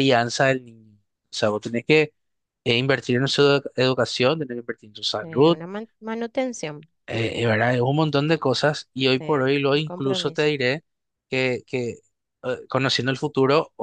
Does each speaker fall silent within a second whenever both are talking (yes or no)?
no